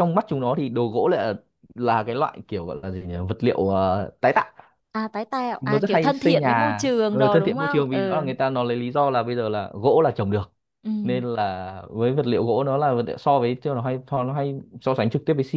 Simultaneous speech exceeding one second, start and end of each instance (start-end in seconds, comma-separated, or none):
5.6-8.2